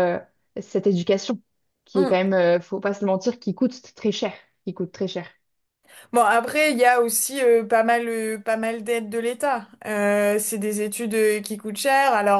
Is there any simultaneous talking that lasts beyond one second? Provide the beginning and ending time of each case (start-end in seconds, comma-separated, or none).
none